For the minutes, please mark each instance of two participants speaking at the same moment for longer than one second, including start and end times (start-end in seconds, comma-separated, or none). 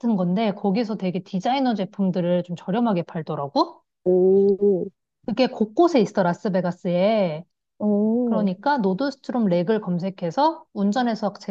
none